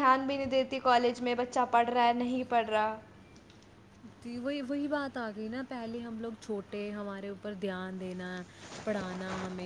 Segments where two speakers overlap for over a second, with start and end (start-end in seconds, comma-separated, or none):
none